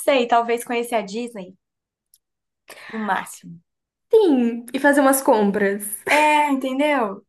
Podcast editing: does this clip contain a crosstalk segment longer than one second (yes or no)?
no